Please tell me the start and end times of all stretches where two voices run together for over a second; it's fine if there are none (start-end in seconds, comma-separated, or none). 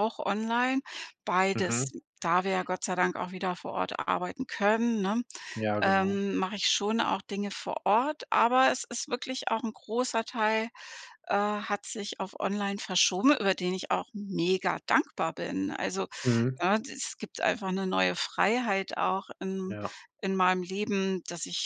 none